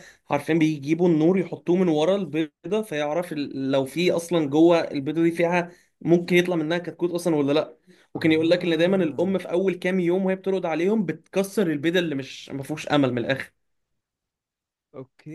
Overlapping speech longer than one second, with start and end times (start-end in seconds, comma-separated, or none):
8.1-9.4